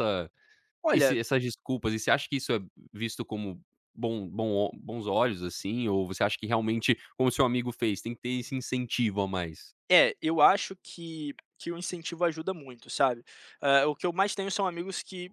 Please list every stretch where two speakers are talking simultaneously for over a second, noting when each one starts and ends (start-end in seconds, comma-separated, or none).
none